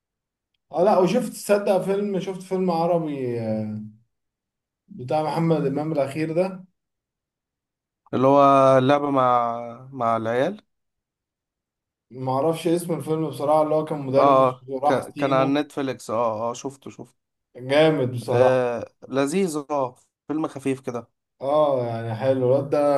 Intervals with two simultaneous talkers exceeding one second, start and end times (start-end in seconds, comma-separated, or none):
14.2-15.6